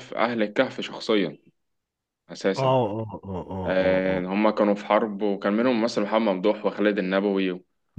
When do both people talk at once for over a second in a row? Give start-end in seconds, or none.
none